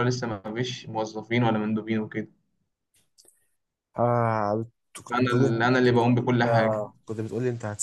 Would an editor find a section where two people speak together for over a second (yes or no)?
yes